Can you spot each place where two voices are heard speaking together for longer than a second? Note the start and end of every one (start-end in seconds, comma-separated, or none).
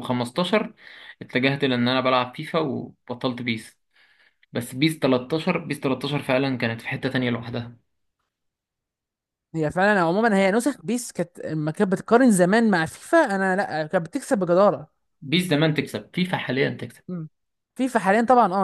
none